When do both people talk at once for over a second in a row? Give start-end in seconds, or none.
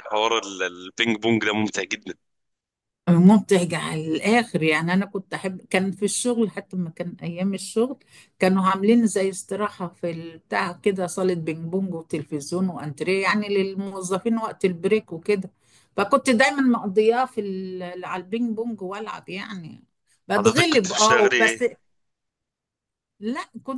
20.4-21.6